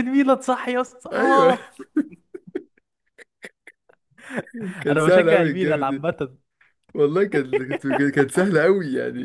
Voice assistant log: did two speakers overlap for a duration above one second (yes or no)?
yes